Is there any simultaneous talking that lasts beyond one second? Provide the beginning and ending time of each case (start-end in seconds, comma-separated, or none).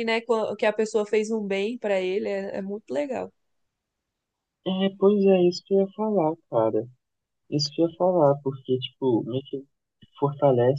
none